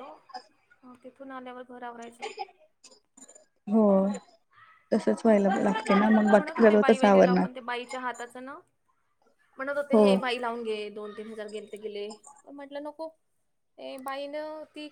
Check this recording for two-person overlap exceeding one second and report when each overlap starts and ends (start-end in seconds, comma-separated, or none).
5.6-7.5